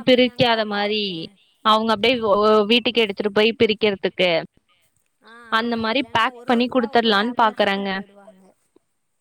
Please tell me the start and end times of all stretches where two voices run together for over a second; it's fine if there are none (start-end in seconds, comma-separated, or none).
5.6-7.9